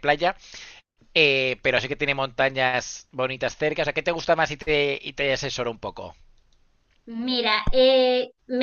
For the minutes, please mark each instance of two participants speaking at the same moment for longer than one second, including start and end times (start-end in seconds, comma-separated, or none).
none